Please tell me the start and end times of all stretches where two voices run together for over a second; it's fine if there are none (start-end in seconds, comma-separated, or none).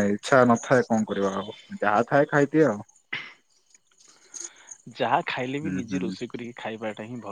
none